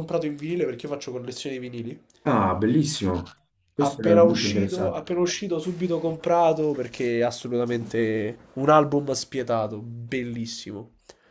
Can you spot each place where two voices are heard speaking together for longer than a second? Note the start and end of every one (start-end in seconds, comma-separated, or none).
3.8-5.0